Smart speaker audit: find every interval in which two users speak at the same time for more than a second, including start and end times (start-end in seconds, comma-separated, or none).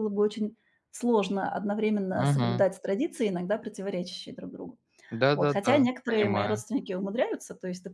5.3-6.6